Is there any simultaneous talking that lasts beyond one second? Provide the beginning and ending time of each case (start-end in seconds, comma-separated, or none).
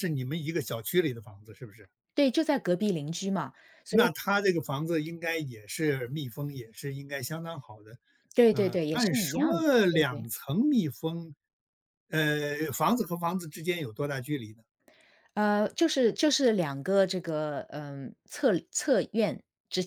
8.5-10.2